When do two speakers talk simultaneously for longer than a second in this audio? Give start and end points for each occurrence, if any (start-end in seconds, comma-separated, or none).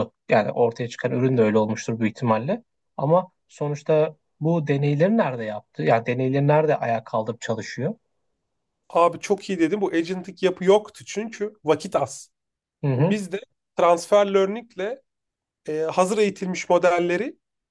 none